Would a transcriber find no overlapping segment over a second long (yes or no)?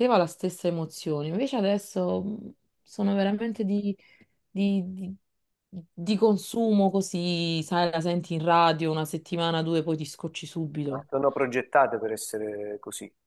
yes